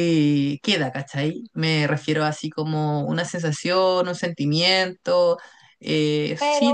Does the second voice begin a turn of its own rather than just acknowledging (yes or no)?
yes